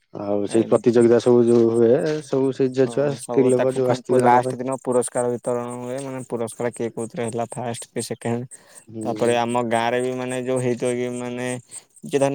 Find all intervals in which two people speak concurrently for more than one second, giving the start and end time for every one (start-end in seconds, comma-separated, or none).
2.9-4.7